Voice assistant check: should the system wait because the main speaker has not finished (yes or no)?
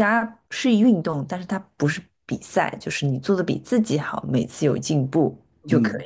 no